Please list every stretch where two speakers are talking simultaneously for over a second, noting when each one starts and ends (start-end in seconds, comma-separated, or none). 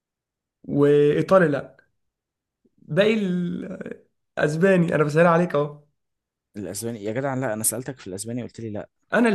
none